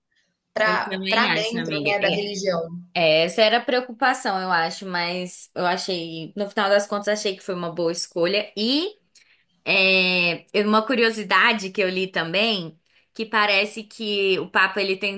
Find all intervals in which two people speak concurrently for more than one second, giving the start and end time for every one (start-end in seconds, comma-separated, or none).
0.6-2.2